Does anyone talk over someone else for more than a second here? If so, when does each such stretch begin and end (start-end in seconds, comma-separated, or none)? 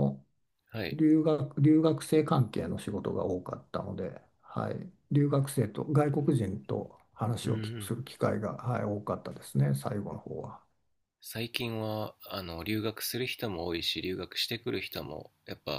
none